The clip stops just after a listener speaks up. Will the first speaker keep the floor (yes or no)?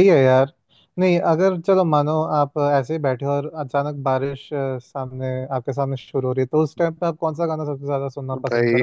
no